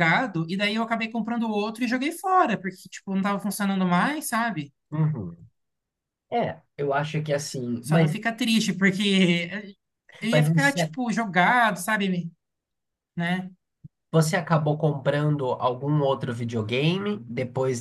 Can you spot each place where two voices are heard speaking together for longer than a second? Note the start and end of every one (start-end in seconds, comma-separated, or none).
none